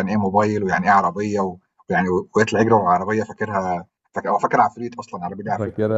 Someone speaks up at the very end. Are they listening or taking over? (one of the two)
taking over